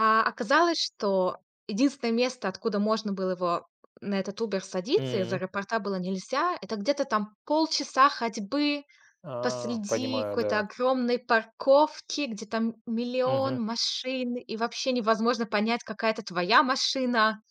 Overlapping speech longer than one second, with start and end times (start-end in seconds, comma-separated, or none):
9.4-10.7